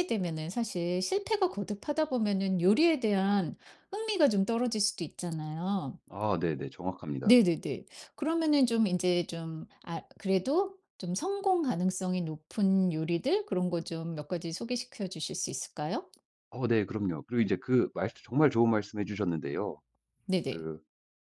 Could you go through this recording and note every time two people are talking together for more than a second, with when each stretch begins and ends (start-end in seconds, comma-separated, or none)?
none